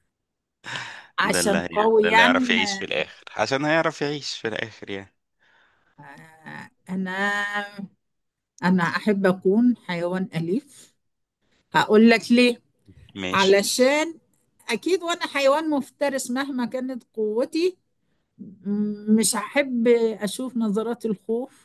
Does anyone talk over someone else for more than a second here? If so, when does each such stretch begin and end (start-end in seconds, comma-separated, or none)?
1.2-2.9